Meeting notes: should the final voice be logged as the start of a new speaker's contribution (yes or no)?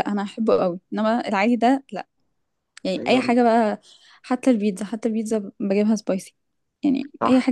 yes